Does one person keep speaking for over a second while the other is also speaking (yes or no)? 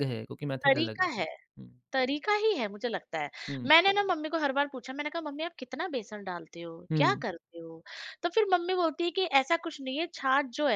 no